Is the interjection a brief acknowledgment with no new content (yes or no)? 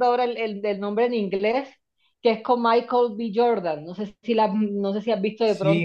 no